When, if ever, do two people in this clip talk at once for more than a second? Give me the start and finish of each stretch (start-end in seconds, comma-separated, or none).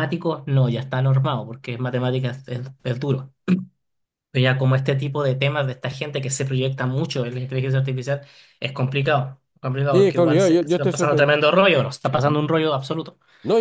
9.9-11.4